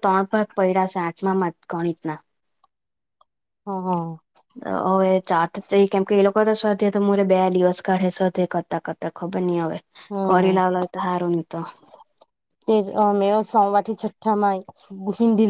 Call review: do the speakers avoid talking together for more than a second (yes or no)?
yes